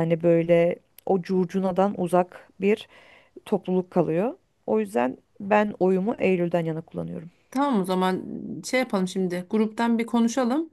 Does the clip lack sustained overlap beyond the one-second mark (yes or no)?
yes